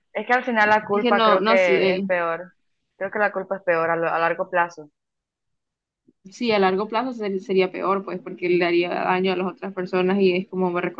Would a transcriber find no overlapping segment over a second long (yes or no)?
no